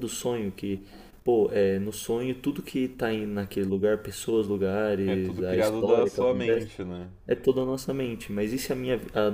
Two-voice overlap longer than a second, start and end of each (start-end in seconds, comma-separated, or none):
5.0-6.7